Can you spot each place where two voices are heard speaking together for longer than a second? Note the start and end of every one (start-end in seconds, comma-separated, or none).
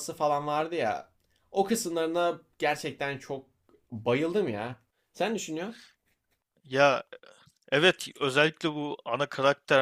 none